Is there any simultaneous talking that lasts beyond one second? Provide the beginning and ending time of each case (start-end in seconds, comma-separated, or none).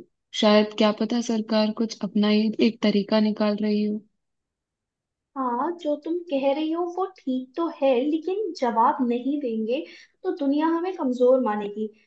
none